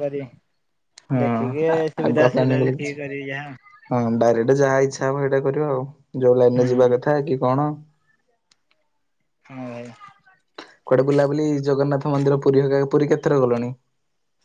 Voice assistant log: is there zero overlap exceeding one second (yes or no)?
no